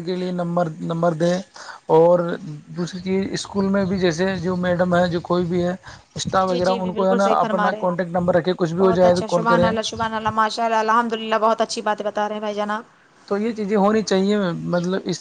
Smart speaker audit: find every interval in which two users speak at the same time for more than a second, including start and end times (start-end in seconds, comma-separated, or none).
6.5-7.9